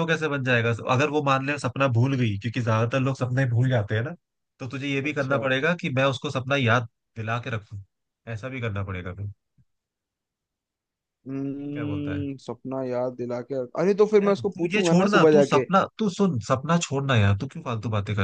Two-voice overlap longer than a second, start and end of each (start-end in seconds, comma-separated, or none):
14.2-15.6